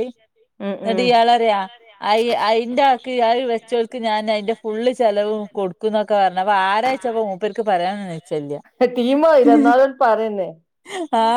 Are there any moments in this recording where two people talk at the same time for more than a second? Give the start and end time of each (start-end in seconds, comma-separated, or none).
none